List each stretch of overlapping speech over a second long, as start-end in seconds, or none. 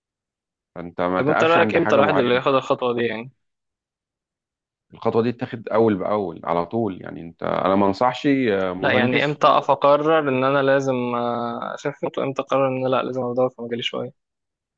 1.2-2.4